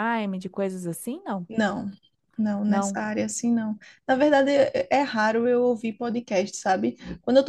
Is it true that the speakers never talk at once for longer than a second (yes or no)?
yes